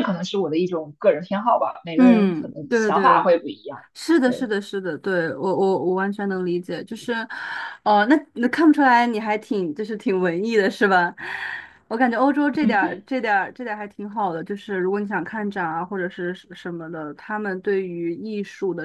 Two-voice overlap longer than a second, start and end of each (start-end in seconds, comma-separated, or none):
1.9-3.3